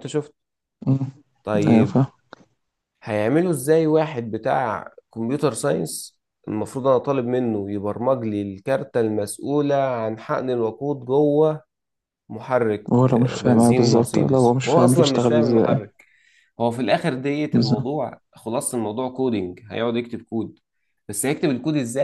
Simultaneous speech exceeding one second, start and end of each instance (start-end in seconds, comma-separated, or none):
12.9-15.8